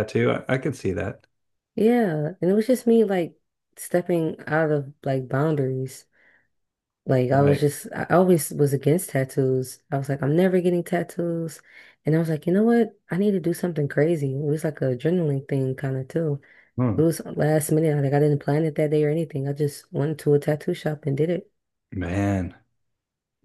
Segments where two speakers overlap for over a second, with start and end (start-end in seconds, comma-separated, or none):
none